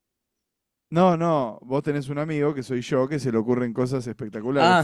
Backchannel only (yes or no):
no